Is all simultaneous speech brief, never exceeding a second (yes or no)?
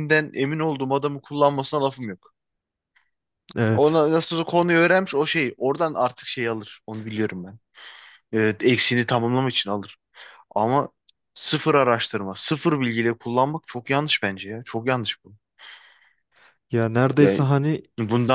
yes